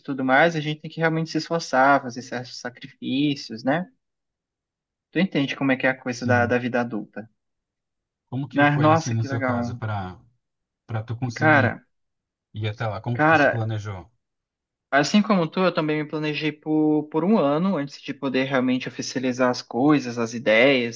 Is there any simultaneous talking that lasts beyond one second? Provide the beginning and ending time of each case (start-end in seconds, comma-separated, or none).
8.5-9.8